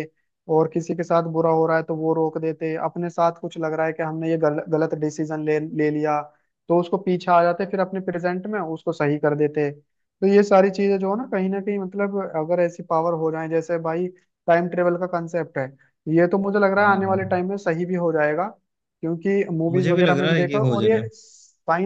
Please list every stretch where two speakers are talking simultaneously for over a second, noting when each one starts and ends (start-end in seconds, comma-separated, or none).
19.7-21.1